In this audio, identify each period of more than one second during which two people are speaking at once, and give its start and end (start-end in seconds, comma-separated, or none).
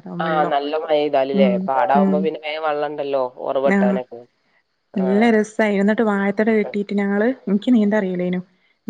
none